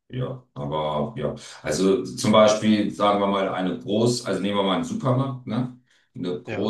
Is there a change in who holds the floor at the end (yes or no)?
no